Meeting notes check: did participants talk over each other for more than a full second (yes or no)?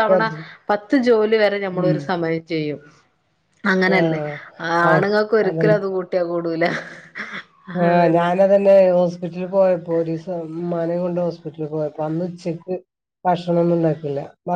no